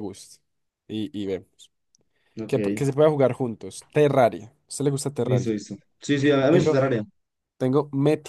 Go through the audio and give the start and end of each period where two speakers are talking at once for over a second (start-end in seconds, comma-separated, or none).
none